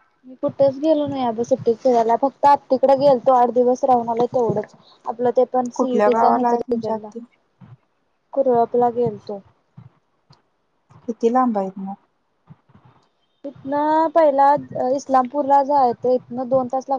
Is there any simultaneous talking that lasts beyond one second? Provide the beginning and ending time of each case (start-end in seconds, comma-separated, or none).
5.8-7.1